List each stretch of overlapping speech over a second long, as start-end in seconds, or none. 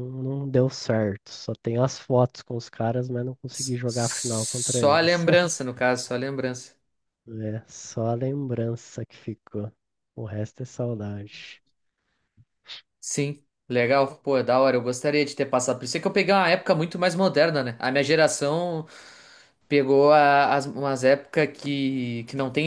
3.5-5.2